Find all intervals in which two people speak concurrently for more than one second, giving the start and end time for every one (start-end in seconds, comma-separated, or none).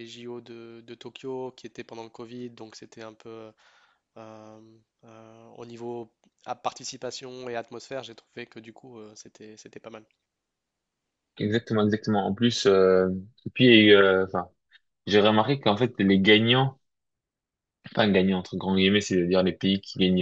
none